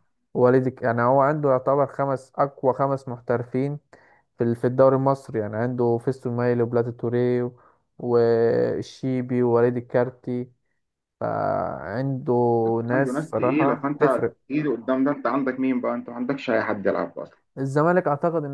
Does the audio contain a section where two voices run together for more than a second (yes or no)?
yes